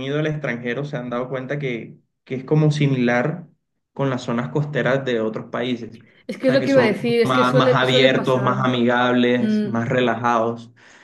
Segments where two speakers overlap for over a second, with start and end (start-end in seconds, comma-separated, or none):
6.4-8.6